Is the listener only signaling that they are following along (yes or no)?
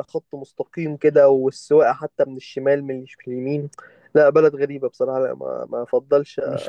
no